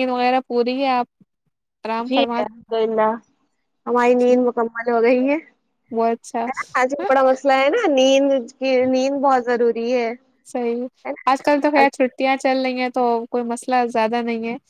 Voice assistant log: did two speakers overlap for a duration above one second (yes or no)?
no